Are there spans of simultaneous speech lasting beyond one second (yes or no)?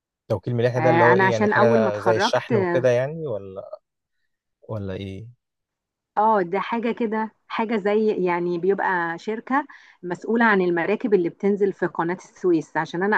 yes